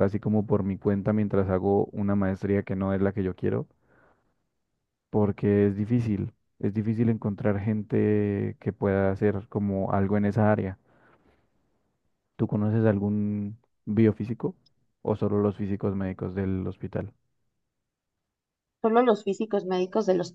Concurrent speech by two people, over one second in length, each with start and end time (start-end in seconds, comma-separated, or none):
none